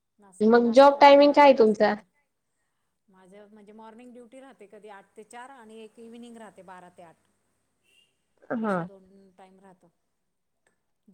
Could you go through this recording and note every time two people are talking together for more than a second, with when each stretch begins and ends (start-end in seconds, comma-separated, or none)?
0.5-1.9